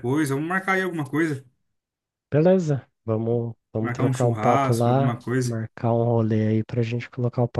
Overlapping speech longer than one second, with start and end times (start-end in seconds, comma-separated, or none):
3.8-5.6